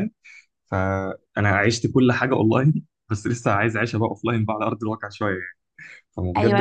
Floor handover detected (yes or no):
yes